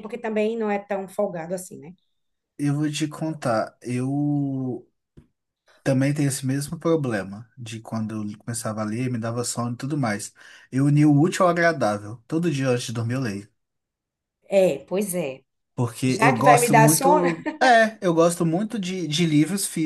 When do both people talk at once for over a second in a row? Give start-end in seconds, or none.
16.1-17.3